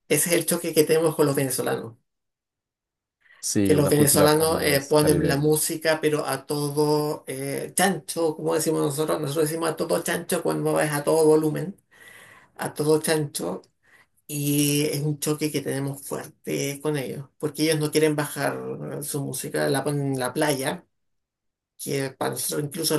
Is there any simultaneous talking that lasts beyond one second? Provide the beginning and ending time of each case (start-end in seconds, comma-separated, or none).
3.6-5.5